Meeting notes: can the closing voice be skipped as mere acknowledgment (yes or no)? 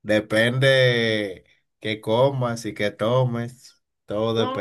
no